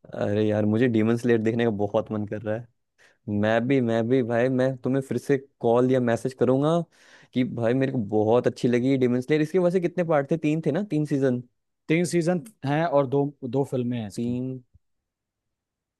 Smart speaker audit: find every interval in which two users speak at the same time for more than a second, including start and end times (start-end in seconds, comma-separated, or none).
none